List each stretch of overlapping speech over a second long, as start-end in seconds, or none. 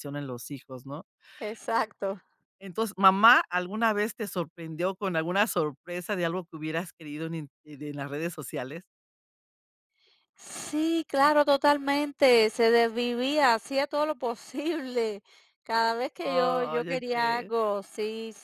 16.2-17.5